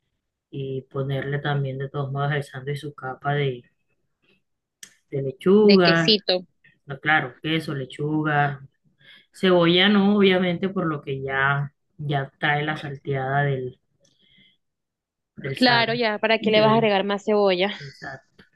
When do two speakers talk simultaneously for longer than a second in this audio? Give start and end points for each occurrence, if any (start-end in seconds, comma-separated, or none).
15.6-16.9